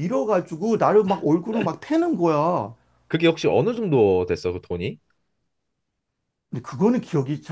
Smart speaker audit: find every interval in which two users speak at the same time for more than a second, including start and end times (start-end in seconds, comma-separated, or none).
none